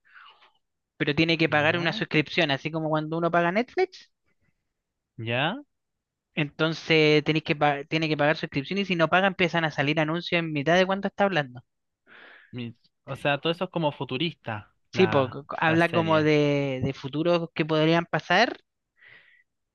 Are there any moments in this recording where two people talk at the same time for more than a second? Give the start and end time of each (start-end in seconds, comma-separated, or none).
14.9-16.3